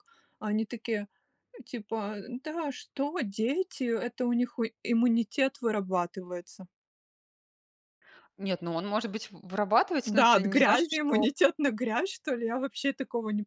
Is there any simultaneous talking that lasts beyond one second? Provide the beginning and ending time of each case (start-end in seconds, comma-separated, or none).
10.1-11.3